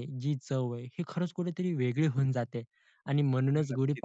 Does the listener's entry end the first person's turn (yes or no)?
no